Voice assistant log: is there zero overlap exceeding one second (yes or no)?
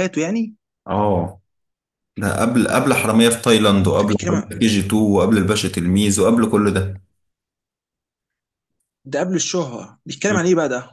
yes